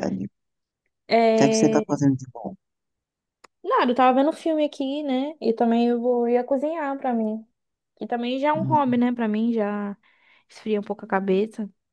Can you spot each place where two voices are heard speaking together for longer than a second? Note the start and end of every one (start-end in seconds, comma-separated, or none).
none